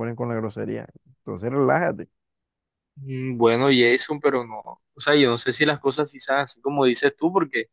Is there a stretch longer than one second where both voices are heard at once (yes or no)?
no